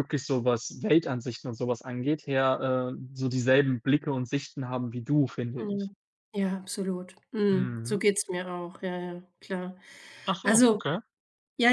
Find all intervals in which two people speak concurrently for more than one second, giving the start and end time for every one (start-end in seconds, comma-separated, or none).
none